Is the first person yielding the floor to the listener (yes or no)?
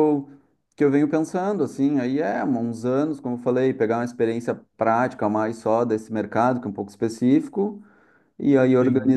no